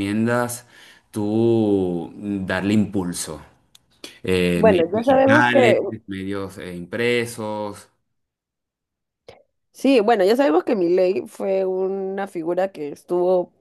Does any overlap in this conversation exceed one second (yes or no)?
yes